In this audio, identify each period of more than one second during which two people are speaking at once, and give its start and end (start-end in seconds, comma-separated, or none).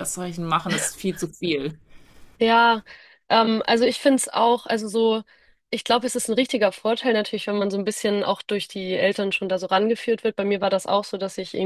none